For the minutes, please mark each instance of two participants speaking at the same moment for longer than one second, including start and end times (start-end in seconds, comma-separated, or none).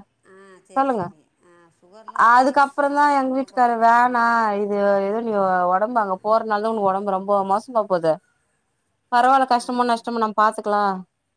2.3-4.2